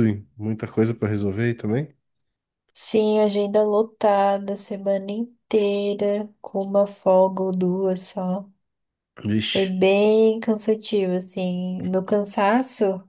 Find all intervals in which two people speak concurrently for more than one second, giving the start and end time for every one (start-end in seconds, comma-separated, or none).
none